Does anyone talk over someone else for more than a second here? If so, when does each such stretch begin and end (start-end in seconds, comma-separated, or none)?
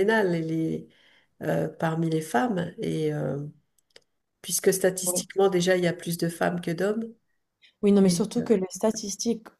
none